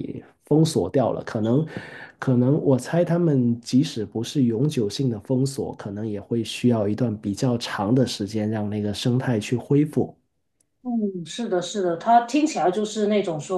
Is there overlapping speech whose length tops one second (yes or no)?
no